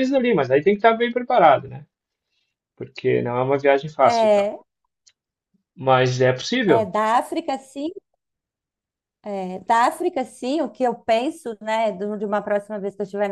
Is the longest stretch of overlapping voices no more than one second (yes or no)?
yes